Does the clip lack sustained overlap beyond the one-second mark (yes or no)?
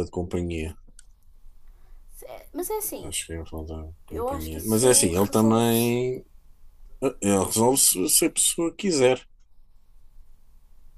no